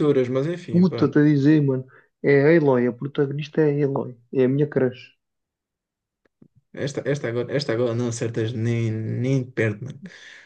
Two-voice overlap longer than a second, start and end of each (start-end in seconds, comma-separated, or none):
none